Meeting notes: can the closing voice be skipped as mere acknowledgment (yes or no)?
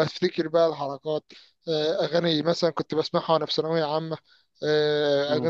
yes